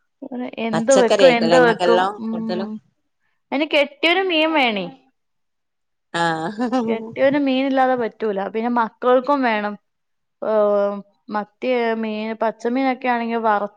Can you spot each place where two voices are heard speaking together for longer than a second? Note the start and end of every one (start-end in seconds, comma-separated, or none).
0.7-2.7